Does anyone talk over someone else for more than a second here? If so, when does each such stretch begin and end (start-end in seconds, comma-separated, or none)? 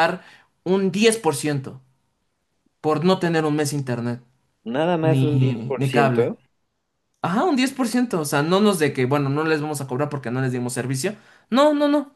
5.0-6.3